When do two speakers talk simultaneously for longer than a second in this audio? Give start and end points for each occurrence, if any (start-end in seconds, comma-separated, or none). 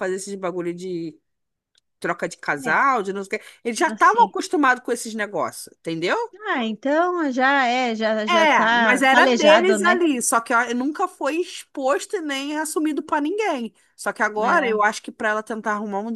8.3-10.0